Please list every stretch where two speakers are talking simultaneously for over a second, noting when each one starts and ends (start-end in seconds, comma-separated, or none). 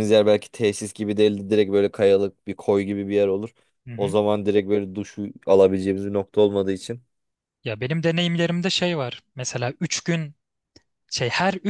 none